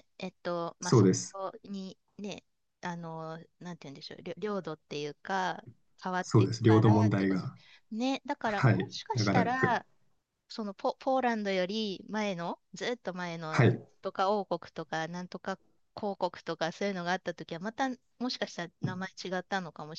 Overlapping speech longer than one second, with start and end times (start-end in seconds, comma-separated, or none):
6.2-7.5, 8.4-9.8